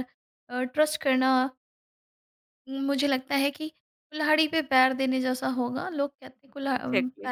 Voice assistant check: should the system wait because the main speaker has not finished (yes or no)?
yes